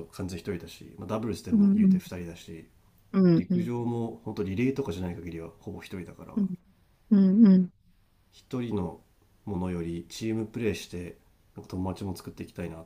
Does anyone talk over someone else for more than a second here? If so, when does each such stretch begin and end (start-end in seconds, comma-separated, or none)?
none